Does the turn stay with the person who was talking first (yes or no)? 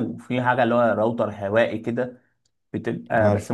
yes